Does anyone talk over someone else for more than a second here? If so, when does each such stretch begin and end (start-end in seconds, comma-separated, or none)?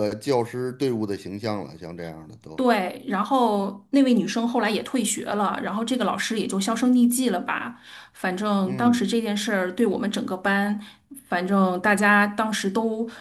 none